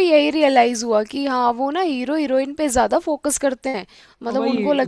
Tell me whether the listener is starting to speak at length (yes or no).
yes